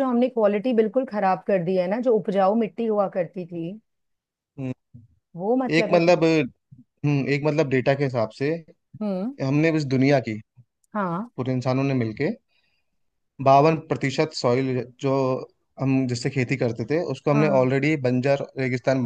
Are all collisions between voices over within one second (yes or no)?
yes